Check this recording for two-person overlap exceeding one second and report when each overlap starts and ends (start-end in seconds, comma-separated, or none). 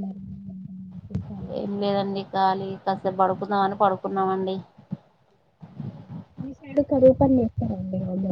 none